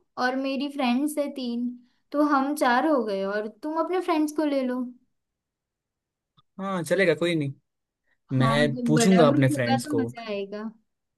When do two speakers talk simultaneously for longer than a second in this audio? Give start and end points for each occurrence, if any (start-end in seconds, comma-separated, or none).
8.4-10.1